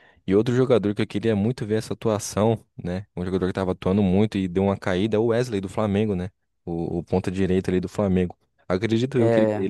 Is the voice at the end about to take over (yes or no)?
no